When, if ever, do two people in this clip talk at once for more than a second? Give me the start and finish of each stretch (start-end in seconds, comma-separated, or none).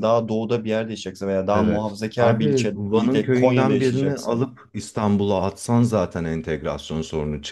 1.5-4.4